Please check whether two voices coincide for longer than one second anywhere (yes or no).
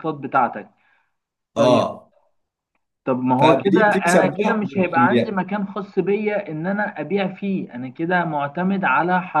yes